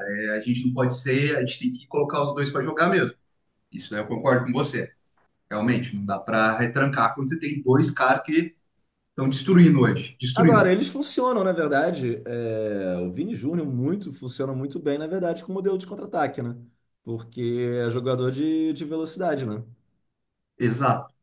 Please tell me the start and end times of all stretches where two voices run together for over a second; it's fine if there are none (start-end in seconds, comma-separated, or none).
none